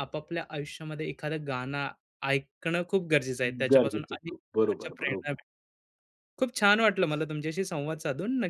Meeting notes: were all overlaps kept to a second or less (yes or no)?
no